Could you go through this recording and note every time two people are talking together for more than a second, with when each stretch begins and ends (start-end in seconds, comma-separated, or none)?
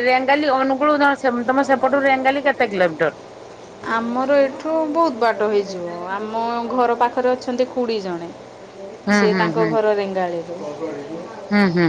none